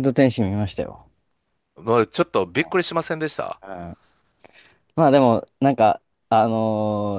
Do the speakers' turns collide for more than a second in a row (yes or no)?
no